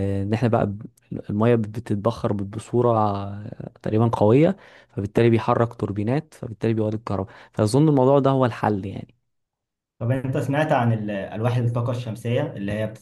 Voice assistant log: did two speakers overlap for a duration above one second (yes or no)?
no